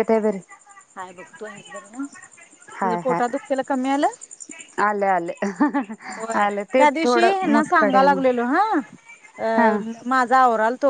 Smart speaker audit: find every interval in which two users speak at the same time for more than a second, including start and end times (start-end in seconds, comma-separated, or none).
6.2-8.2